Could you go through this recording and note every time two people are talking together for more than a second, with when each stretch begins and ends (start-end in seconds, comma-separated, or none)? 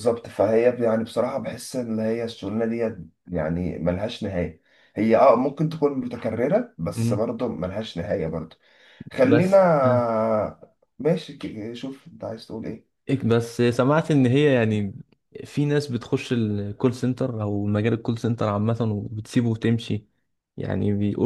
none